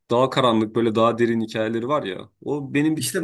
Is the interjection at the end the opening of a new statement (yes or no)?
yes